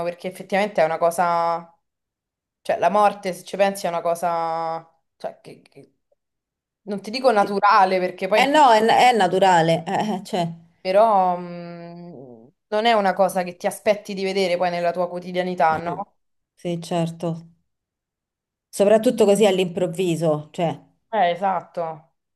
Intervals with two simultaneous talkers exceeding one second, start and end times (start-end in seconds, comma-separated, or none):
none